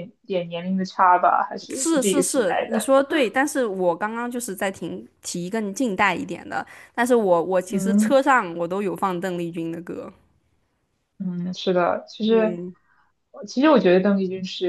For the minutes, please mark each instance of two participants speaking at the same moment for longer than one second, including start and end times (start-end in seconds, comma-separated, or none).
1.7-2.9